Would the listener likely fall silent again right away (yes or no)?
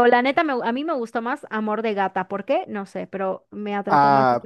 no